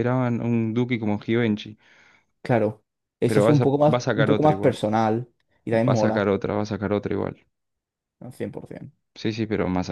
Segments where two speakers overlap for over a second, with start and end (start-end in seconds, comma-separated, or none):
3.3-4.8